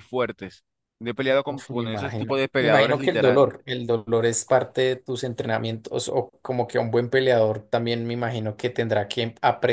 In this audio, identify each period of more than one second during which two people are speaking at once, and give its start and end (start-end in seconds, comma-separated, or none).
1.5-3.5